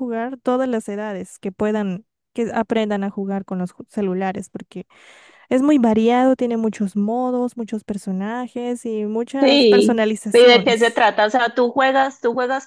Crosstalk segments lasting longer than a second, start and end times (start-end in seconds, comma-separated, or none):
9.4-11.1